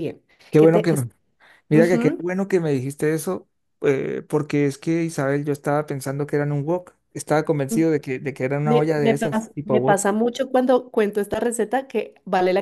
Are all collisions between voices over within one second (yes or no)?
no